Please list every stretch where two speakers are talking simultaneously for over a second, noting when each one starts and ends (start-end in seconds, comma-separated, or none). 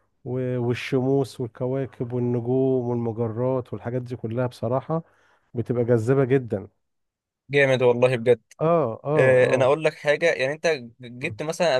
none